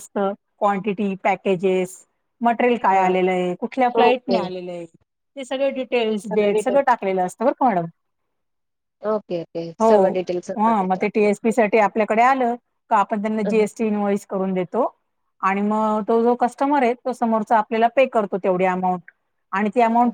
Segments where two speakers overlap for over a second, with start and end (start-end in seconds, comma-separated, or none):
5.5-6.8